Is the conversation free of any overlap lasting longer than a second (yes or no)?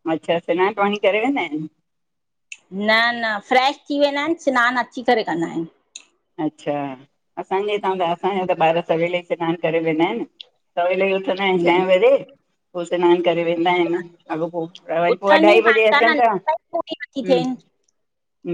no